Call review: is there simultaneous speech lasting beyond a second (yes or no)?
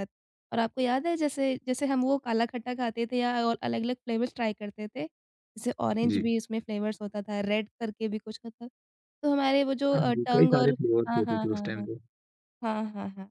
yes